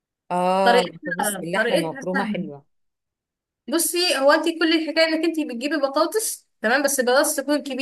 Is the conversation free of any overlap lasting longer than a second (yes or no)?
no